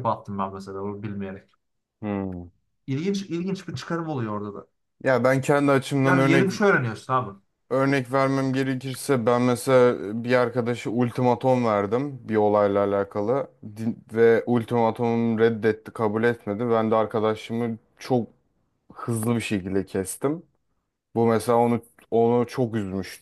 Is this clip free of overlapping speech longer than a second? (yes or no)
yes